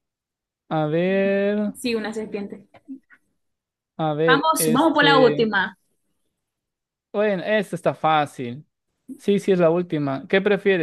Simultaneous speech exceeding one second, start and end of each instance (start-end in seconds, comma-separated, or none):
4.2-5.5